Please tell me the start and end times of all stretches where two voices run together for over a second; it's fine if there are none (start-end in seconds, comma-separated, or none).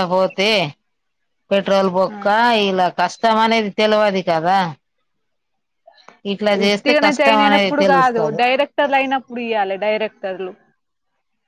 6.6-8.4